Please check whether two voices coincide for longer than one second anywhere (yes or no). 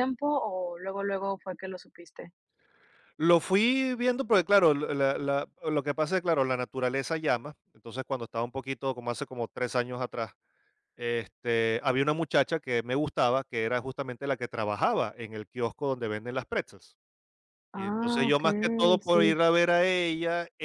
yes